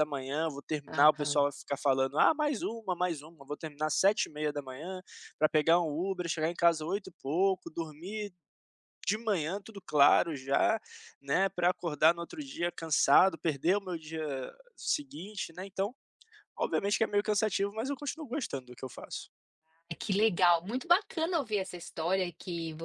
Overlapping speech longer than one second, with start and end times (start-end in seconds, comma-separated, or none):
none